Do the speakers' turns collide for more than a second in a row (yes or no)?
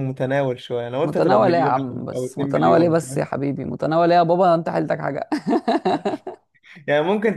yes